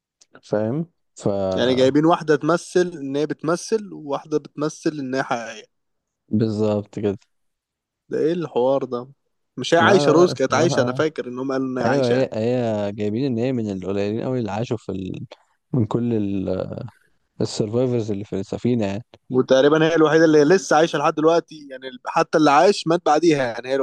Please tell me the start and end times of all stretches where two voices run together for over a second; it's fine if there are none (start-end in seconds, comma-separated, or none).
9.8-11.0